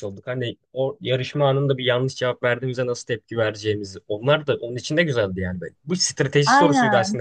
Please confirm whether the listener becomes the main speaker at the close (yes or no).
no